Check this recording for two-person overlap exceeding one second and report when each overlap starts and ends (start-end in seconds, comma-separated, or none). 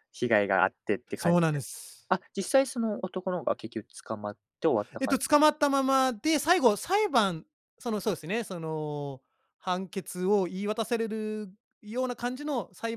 none